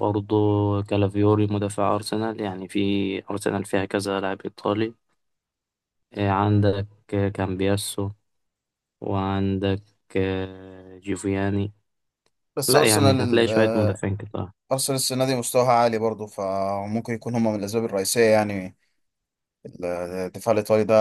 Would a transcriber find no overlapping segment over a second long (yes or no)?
no